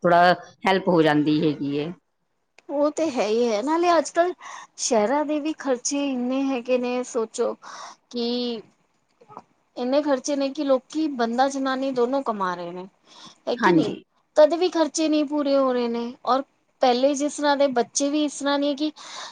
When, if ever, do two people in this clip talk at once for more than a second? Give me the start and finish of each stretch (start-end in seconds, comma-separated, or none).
none